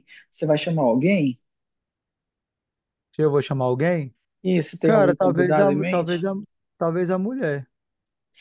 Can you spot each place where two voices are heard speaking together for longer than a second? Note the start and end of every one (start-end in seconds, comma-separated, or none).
4.8-6.2